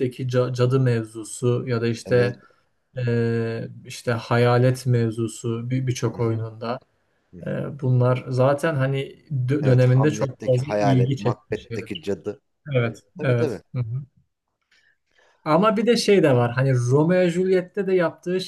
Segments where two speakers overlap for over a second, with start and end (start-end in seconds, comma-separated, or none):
9.6-12.1